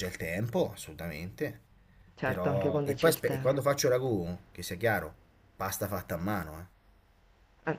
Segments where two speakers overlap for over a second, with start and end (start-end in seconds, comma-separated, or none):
2.2-3.6